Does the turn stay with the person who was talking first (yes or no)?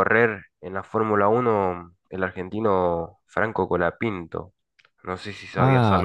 no